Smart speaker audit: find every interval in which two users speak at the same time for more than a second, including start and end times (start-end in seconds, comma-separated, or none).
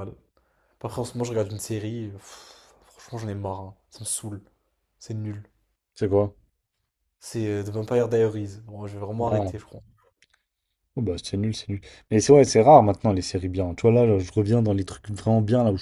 none